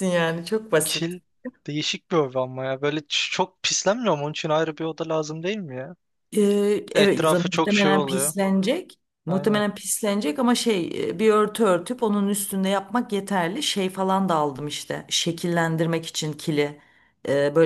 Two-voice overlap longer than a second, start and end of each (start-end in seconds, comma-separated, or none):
6.9-8.3